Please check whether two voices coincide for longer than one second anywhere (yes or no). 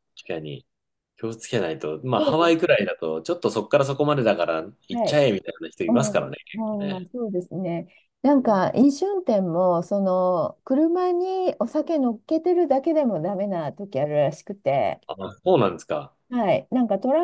no